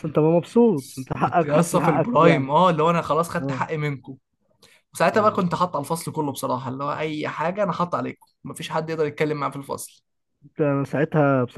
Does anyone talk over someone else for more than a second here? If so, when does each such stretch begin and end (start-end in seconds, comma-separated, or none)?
1.2-2.5